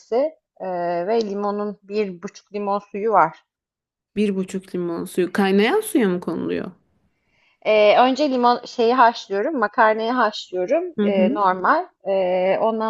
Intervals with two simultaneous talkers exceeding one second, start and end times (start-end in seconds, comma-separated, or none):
none